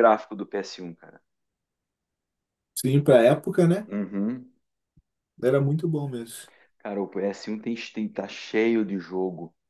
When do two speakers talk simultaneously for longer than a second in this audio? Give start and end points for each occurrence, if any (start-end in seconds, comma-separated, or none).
none